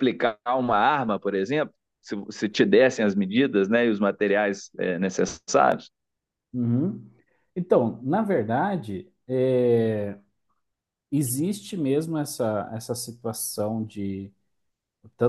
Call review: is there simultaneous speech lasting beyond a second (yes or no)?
no